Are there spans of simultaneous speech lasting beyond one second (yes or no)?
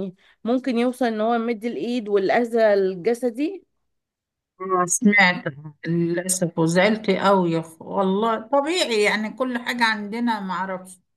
no